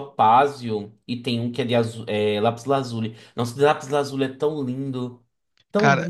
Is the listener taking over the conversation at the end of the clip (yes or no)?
yes